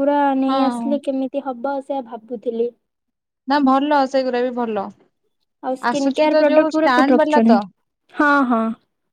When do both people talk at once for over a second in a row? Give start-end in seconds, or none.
5.9-7.5